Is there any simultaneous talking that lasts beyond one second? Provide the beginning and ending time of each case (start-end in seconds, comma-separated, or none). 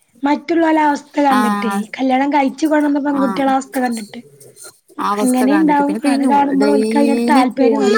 5.2-7.4